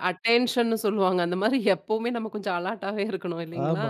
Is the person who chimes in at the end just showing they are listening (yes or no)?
no